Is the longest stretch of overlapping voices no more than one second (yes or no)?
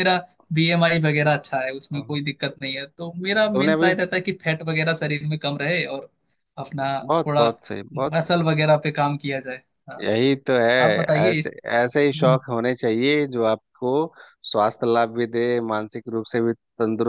yes